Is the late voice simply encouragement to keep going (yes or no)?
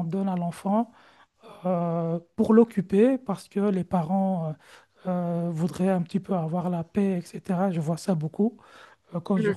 yes